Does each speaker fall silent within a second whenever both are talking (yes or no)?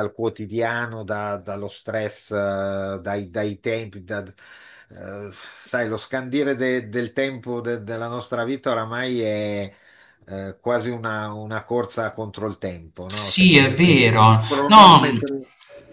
no